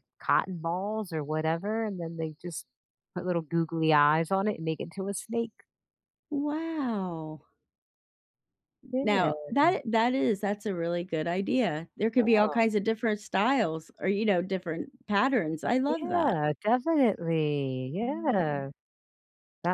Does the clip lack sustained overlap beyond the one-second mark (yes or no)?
yes